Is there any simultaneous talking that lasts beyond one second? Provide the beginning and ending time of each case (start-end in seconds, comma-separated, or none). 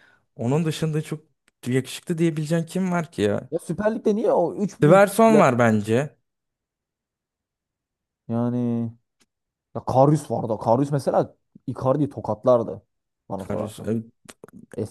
none